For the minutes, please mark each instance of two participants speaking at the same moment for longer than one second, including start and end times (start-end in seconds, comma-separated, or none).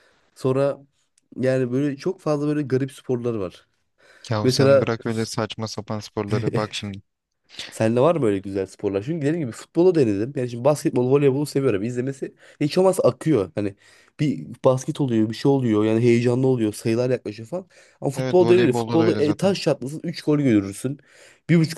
18.1-19.6